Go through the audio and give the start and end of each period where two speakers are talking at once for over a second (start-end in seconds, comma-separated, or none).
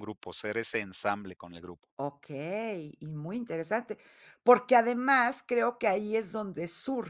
none